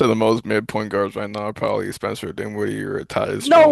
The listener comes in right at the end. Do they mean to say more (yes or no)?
yes